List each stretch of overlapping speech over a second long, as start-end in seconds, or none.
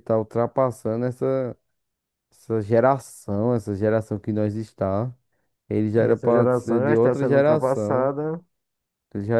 6.0-8.1